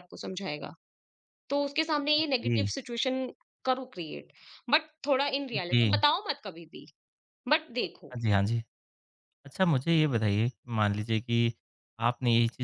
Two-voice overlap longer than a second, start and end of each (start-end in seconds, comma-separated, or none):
none